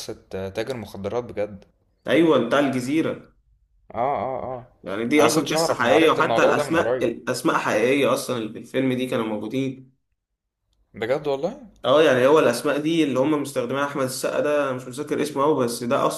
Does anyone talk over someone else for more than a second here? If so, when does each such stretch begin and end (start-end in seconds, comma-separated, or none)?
5.2-7.1